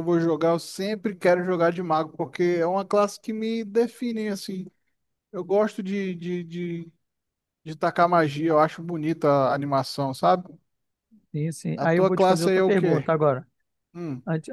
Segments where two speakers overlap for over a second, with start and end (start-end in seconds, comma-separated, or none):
11.8-13.1